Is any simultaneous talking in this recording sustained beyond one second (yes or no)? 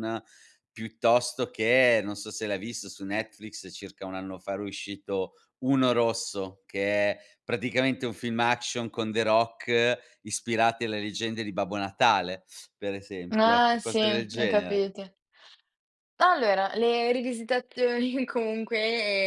yes